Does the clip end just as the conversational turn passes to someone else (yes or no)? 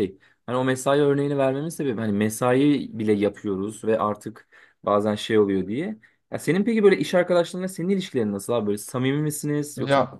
yes